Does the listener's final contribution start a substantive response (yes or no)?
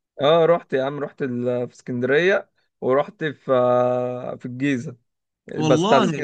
no